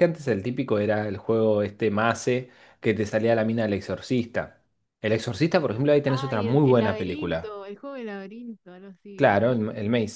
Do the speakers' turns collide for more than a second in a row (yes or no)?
yes